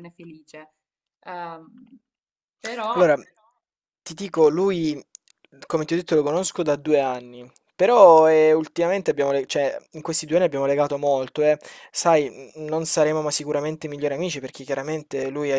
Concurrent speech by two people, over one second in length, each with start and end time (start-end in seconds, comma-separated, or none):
none